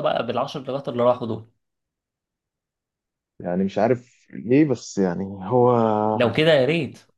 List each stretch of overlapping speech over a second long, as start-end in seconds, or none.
none